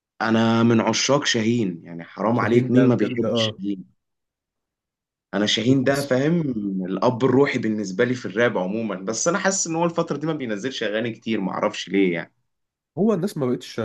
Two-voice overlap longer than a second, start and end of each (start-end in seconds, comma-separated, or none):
2.3-3.5